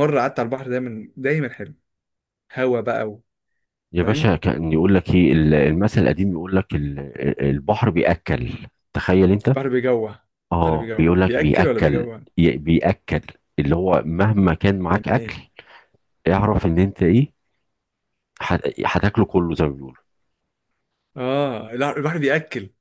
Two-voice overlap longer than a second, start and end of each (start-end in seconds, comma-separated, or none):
10.7-12.2